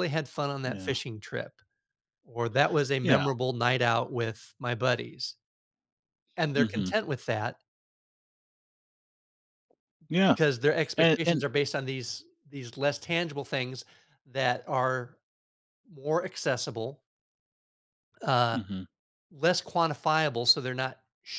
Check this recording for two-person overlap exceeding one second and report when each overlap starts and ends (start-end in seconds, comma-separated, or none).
none